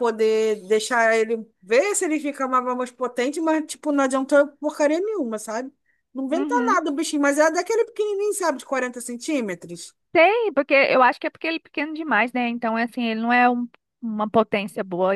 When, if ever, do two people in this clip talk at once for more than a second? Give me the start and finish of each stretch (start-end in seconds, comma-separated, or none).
none